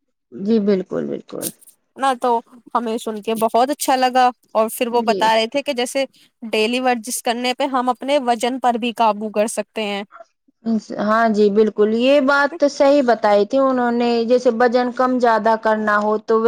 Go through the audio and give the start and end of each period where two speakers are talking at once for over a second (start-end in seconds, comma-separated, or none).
none